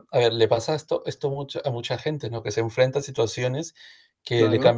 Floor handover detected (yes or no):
no